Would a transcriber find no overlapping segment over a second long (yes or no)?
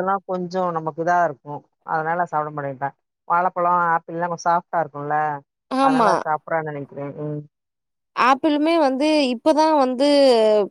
yes